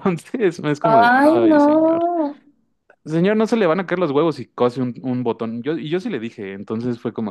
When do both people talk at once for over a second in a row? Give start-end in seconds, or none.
0.8-2.1